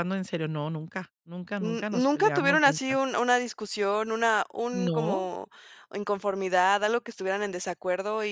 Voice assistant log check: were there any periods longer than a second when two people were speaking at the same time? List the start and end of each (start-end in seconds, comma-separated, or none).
1.6-3.0